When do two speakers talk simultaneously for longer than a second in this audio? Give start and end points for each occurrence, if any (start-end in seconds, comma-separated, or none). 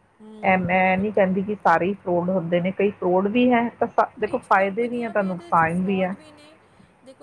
4.2-6.1